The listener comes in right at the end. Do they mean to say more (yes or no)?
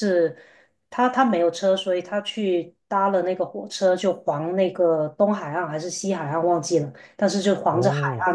no